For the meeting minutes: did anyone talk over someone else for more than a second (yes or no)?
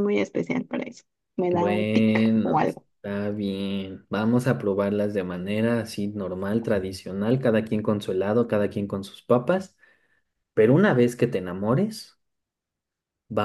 yes